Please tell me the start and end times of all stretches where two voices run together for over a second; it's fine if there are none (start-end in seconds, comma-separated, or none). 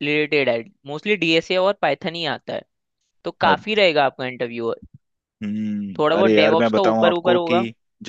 6.0-7.5